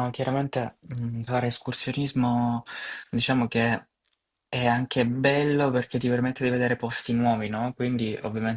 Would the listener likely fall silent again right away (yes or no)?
yes